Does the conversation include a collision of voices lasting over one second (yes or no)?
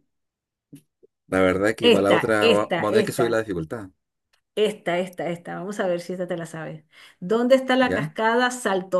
yes